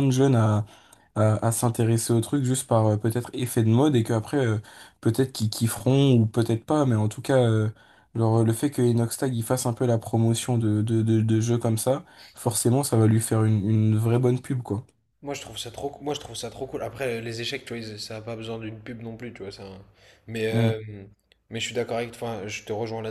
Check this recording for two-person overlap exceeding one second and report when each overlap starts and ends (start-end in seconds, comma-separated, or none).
none